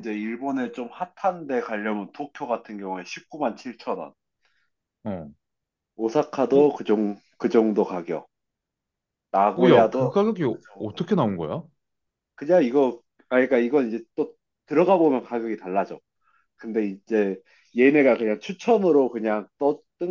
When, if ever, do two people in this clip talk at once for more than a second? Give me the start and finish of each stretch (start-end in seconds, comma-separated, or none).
9.6-11.1